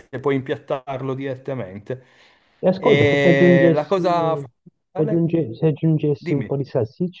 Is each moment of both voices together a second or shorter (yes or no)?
no